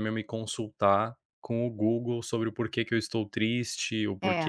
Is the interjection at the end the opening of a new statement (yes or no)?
no